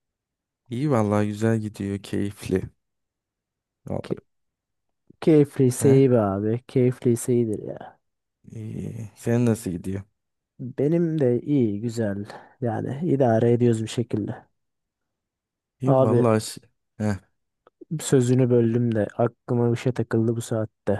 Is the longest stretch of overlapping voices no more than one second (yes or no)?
yes